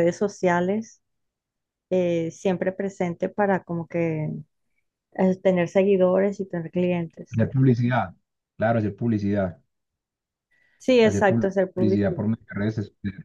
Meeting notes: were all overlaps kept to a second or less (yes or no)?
no